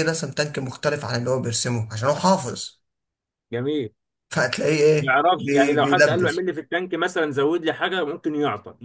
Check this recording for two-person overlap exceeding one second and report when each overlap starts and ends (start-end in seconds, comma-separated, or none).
5.0-6.5